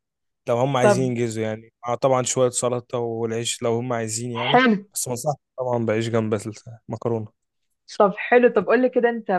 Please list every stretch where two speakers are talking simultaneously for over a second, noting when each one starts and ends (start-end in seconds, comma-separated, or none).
none